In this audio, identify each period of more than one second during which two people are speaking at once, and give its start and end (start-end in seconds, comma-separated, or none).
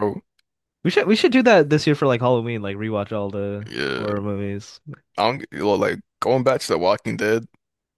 none